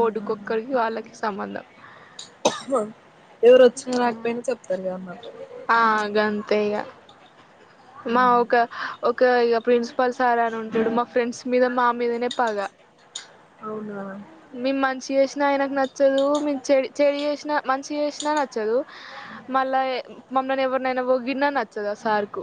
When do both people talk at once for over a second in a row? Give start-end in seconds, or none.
none